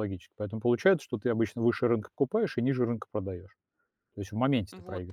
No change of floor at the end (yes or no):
no